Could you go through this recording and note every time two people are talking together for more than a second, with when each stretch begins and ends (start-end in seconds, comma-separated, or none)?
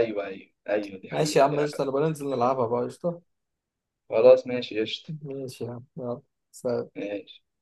1.1-2.6